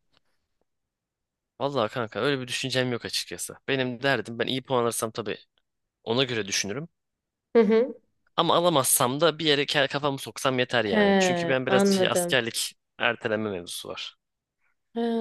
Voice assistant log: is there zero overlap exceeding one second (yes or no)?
no